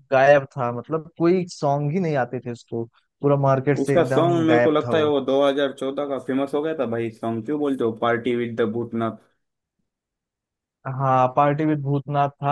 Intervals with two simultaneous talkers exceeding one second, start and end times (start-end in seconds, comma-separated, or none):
3.8-5.1